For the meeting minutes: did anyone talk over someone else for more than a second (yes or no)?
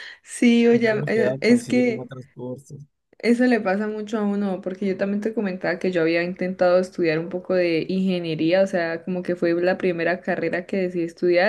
yes